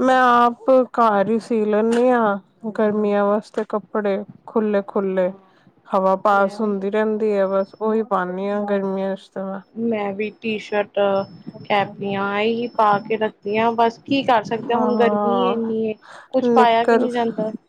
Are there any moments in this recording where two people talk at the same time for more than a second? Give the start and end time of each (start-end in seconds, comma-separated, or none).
none